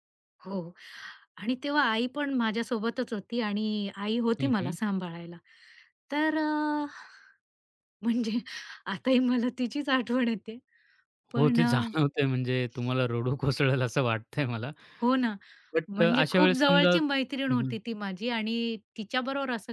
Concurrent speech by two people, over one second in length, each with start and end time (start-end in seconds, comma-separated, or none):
15.9-17.8